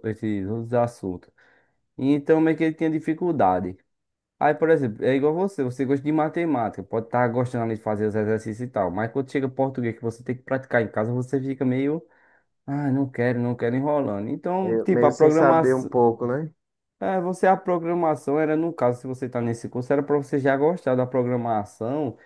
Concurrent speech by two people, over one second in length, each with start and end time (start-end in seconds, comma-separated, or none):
14.6-15.9